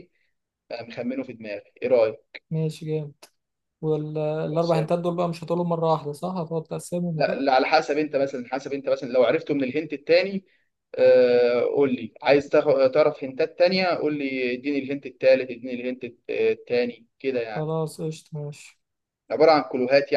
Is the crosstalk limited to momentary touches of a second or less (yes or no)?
yes